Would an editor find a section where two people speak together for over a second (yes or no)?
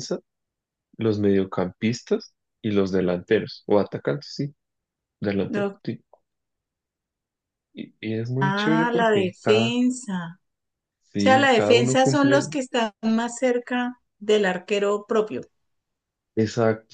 yes